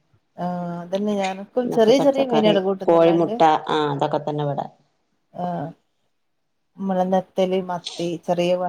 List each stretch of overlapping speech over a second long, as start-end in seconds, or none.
1.6-3.4